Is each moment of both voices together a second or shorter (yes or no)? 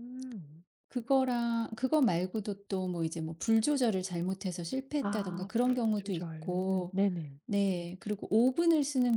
no